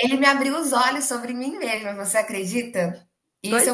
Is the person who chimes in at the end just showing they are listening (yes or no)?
yes